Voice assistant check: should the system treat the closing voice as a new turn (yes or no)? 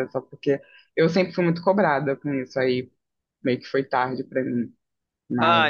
yes